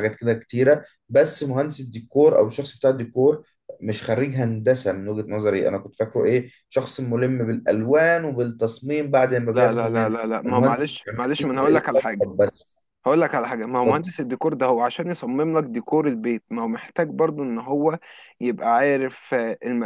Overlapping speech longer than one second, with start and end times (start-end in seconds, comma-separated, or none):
9.5-12.3